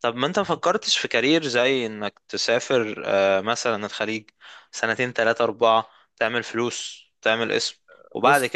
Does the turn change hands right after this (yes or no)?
no